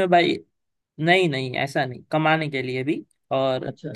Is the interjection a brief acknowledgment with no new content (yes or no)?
yes